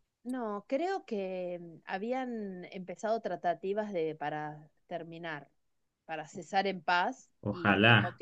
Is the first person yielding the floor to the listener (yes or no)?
no